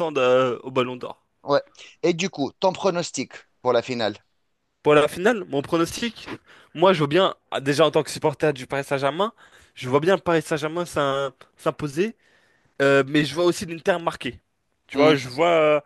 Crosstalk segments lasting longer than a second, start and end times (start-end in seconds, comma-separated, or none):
none